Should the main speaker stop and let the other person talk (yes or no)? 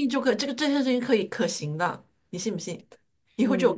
yes